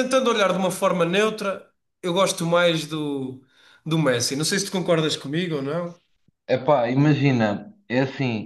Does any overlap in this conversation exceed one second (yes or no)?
no